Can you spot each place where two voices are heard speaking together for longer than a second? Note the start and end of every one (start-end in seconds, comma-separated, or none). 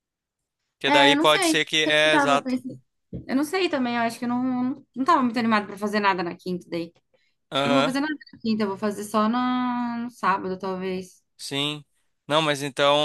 0.9-2.5